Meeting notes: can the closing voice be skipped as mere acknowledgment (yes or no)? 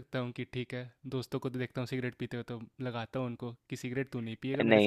no